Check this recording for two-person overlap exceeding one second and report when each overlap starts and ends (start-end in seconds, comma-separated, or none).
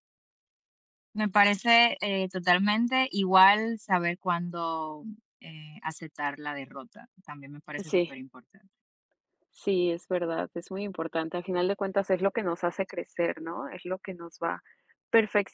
none